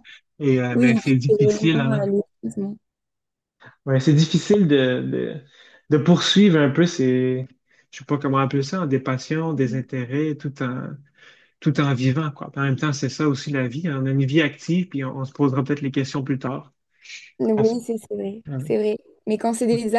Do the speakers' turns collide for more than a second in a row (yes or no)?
yes